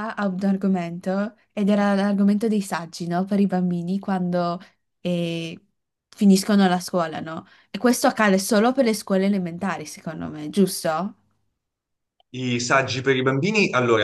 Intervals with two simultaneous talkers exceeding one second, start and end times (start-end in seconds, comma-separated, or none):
none